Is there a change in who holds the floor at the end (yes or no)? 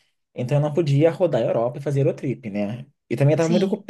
no